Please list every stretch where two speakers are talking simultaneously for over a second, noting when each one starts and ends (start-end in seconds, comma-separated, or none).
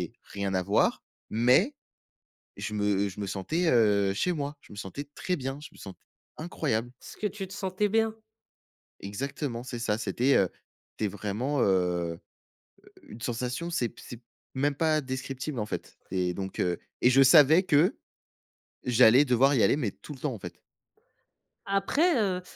none